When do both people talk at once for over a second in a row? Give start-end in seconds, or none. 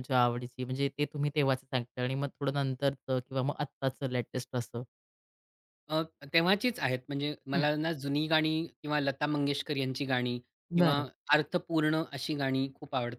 none